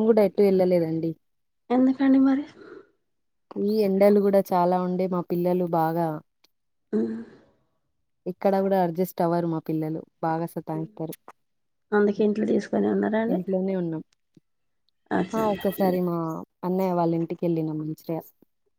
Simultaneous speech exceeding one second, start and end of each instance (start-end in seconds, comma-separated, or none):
none